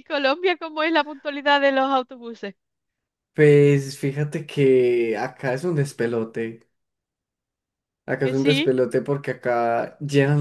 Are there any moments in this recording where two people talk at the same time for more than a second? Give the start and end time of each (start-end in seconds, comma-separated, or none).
none